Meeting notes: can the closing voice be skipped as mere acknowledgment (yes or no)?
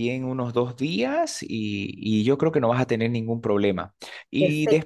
yes